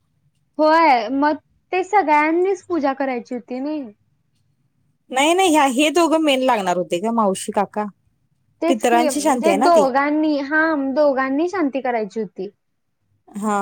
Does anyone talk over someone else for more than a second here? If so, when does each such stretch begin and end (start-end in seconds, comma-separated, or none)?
8.7-9.9